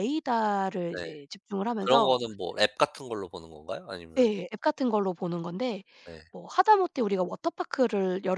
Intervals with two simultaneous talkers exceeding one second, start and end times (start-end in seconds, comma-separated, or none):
none